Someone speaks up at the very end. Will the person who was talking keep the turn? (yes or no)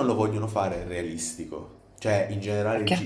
yes